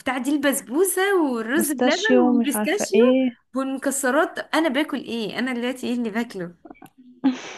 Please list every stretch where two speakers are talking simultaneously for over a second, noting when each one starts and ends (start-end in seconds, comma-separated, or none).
1.5-3.0